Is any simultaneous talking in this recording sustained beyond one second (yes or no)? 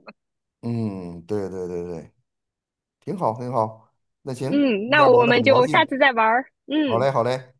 yes